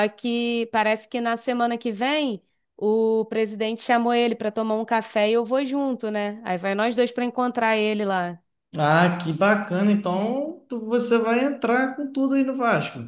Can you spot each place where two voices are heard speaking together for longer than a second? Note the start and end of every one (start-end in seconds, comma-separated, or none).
none